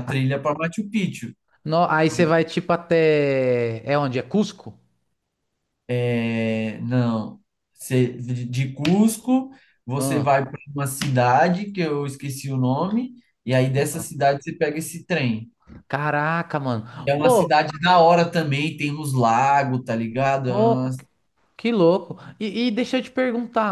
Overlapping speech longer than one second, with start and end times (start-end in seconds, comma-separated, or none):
none